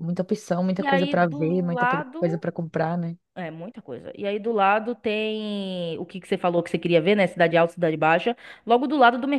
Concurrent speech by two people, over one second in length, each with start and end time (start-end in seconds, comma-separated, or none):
0.8-2.4